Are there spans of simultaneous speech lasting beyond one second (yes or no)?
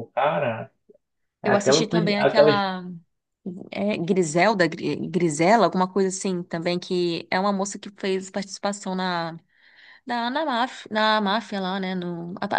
yes